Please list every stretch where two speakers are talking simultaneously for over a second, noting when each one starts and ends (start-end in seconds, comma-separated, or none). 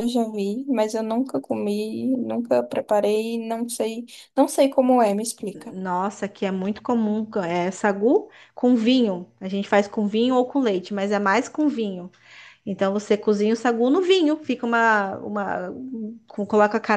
none